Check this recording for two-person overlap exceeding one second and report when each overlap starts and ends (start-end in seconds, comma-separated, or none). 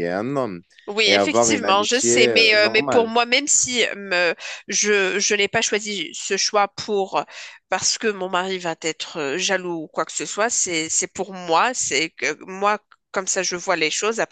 1.1-3.1